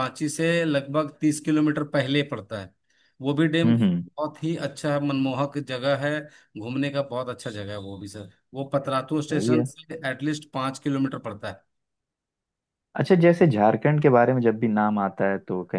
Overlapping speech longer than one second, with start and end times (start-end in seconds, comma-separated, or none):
none